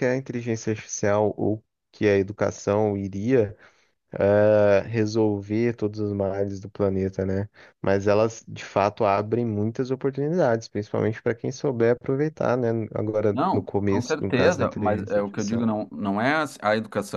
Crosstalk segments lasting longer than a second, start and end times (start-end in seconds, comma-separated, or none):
13.3-15.7